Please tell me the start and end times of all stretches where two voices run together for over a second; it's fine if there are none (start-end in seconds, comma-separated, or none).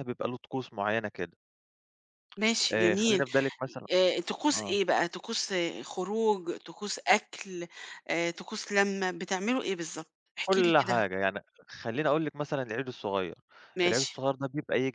none